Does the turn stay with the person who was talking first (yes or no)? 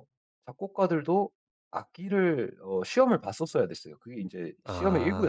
no